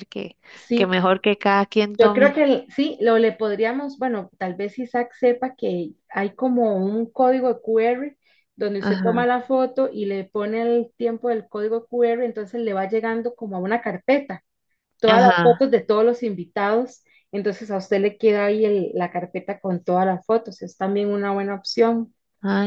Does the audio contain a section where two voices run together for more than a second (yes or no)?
no